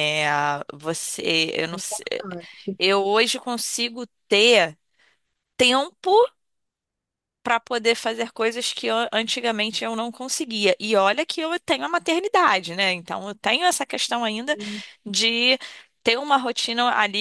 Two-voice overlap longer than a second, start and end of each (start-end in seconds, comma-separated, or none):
none